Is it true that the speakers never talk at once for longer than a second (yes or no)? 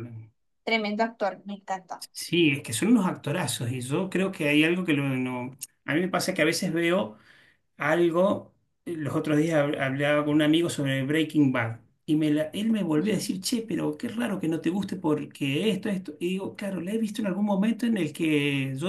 yes